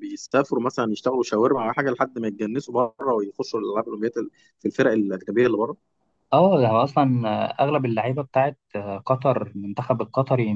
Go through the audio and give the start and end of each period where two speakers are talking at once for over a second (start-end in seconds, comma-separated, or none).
none